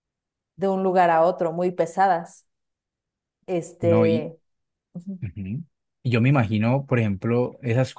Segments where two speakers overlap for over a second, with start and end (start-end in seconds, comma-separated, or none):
none